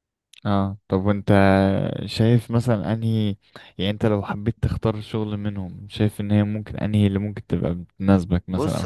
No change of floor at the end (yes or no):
no